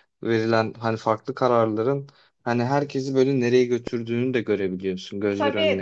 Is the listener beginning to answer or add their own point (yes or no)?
yes